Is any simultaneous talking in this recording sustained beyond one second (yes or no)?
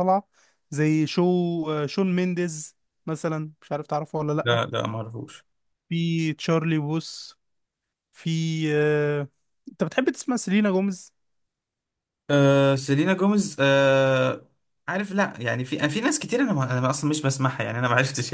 no